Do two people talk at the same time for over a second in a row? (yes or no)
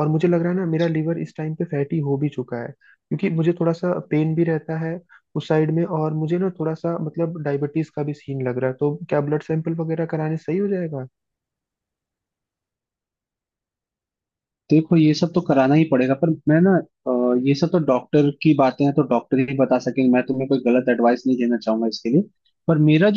no